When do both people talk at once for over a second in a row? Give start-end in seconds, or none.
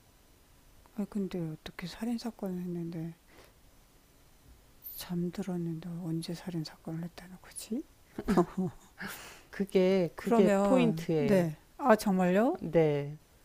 10.2-11.5